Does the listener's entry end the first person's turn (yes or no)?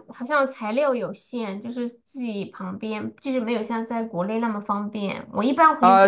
yes